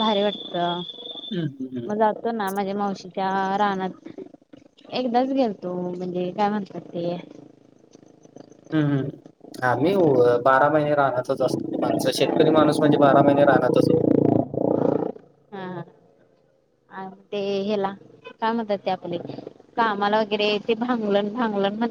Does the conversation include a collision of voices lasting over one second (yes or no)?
no